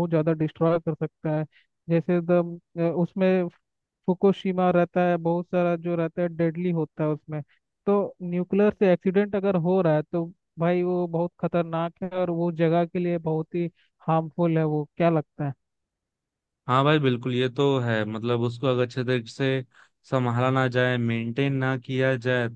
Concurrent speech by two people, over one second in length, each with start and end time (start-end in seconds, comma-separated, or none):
none